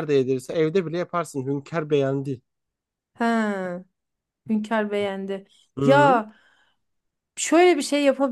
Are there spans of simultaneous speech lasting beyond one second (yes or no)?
no